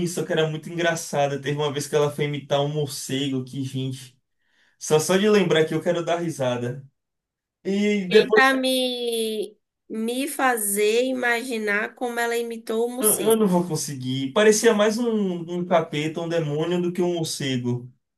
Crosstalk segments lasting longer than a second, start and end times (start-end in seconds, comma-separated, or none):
none